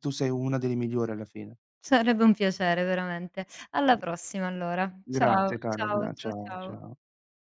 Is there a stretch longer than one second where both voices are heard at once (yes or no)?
yes